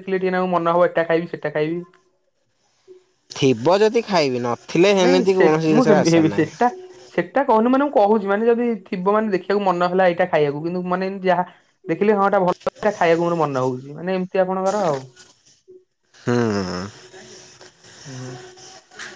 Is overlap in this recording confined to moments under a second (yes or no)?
yes